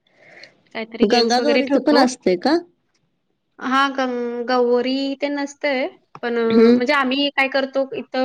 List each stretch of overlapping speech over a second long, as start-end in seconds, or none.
none